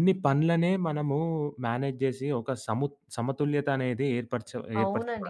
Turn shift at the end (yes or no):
yes